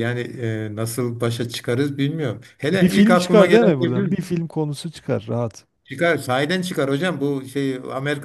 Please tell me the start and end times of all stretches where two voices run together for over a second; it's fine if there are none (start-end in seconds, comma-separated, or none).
2.7-4.2